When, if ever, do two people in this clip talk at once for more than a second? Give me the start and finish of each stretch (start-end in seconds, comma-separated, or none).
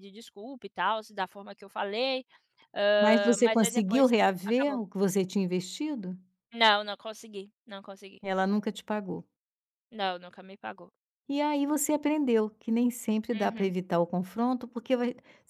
3.0-4.8